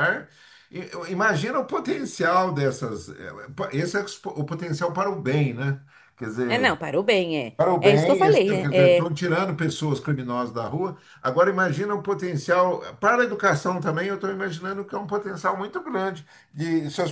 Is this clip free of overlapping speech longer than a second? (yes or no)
no